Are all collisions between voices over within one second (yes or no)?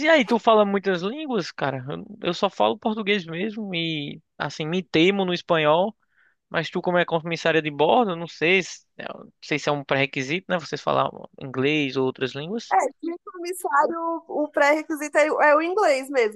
yes